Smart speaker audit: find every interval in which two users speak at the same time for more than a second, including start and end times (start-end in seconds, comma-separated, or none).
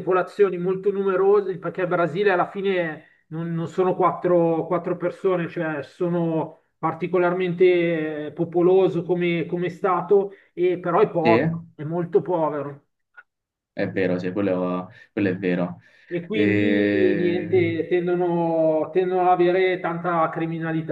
16.3-17.6